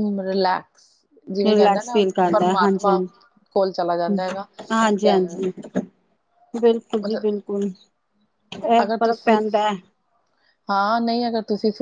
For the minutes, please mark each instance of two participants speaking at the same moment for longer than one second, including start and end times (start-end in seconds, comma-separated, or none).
1.5-2.9